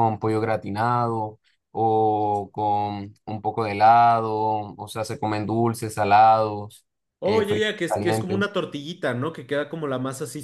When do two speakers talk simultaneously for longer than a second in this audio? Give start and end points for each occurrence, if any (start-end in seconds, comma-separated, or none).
7.2-8.4